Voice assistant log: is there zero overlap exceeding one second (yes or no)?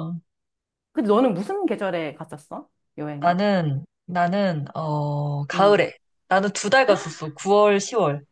yes